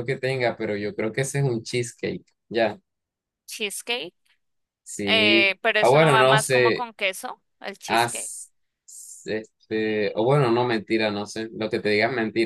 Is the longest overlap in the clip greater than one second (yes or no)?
yes